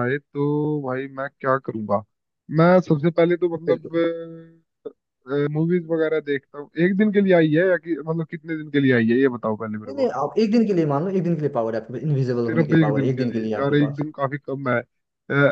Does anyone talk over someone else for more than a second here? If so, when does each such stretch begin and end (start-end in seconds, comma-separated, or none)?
12.3-14.1